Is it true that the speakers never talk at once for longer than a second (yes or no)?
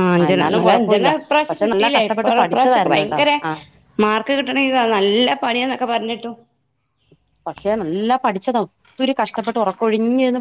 no